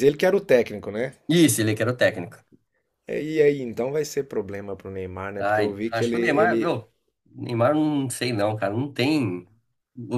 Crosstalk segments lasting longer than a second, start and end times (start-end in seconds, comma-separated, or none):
5.4-6.8